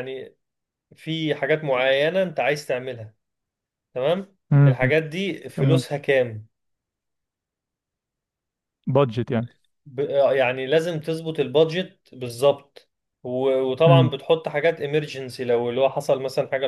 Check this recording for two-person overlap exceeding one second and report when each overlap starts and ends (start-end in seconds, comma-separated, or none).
none